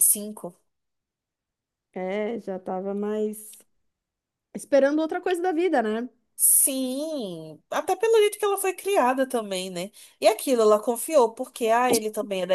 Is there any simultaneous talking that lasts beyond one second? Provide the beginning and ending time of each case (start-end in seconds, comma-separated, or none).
none